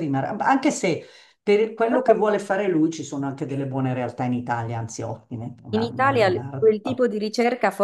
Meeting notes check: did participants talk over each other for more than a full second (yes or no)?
yes